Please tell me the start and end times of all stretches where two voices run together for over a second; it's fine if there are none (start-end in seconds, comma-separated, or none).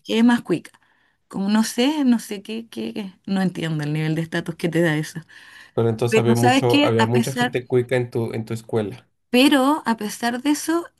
6.1-7.5